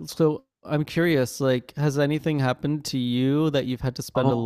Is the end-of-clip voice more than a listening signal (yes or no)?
yes